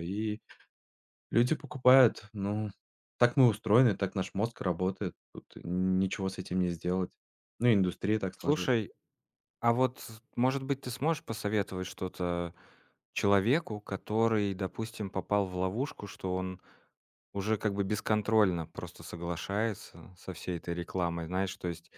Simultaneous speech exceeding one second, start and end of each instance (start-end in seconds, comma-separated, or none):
none